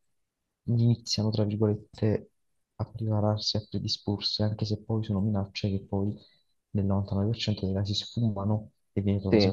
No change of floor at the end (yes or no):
yes